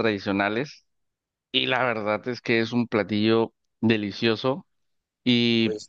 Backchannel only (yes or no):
yes